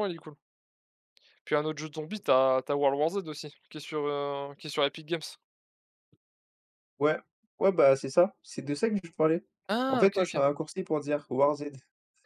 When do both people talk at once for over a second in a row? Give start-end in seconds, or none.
none